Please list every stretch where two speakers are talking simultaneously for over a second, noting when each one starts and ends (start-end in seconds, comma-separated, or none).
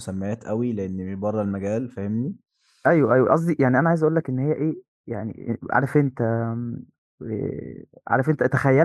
none